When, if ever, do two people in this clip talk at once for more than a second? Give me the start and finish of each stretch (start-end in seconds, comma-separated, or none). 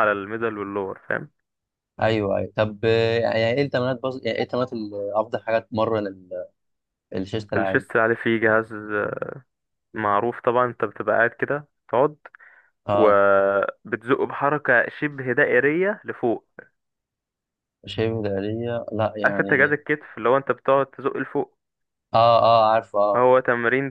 none